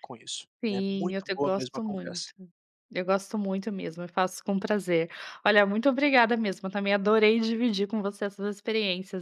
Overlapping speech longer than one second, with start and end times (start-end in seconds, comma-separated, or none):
0.6-2.3